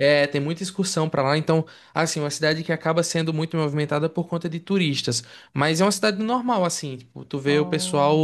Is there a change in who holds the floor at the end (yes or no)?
no